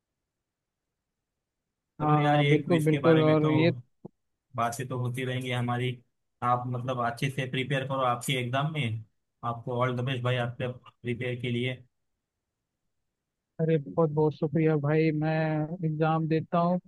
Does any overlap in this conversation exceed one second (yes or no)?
yes